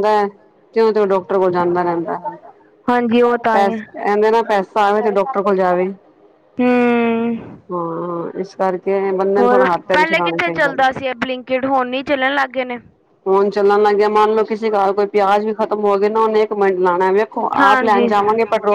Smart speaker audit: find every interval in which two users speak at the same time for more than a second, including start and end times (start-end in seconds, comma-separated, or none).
9.4-10.8